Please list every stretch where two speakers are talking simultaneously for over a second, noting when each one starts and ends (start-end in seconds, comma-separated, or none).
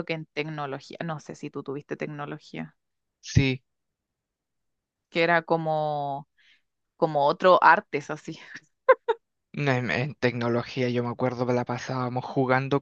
none